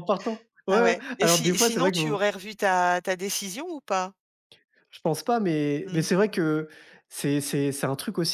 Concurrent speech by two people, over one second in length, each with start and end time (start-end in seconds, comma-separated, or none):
0.7-2.0